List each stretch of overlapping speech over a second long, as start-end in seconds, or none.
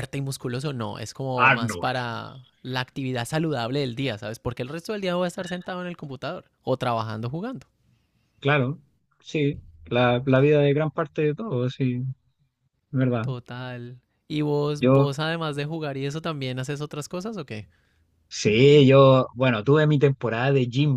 none